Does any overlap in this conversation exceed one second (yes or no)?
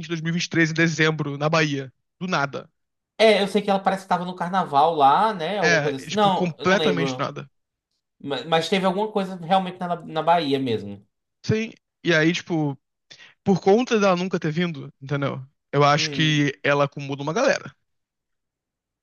yes